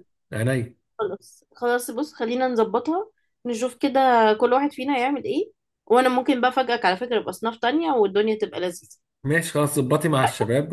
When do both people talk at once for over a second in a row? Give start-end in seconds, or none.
none